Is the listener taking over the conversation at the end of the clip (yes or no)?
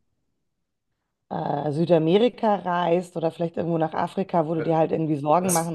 yes